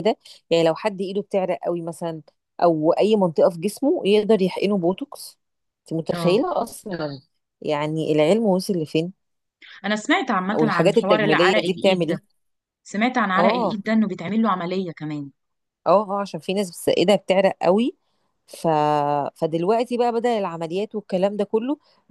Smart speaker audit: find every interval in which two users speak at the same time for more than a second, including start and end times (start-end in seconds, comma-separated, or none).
10.5-12.2